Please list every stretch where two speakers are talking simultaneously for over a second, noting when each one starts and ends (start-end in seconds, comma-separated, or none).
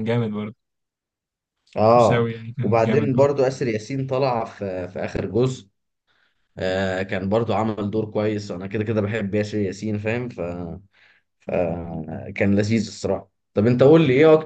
1.9-3.3